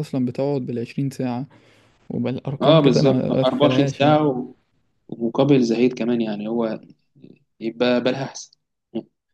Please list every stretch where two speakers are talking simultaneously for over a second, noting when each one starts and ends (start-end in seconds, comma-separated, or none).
2.6-4.2